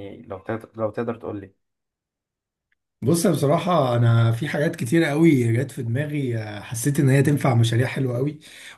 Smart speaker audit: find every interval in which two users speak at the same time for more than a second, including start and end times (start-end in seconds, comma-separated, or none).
none